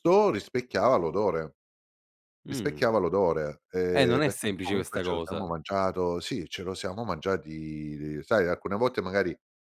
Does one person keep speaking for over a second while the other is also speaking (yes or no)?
yes